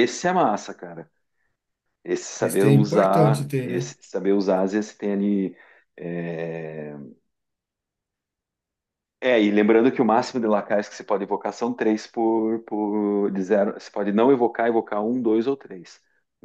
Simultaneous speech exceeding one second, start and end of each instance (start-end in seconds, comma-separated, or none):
2.4-3.9